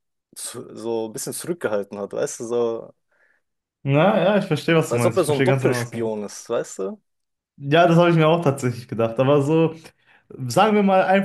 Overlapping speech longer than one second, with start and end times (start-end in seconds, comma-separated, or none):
4.9-6.2